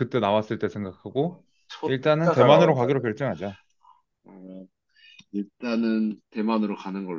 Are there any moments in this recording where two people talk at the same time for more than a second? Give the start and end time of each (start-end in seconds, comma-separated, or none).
1.9-3.0